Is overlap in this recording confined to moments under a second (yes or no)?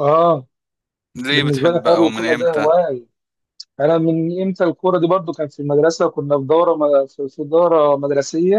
no